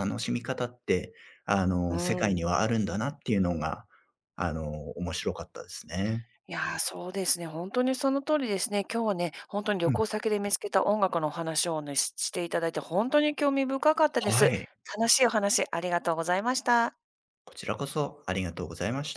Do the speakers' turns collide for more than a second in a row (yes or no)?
no